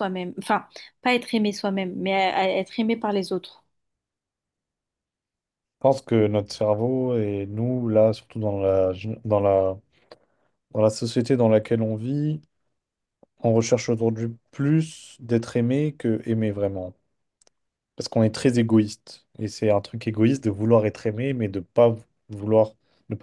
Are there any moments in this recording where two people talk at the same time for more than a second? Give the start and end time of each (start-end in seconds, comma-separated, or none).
none